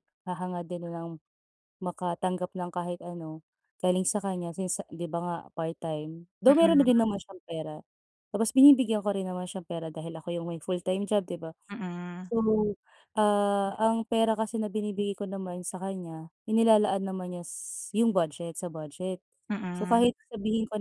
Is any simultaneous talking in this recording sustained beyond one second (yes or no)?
no